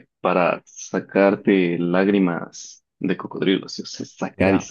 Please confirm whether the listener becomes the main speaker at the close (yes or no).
yes